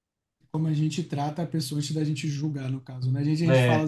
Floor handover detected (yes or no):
no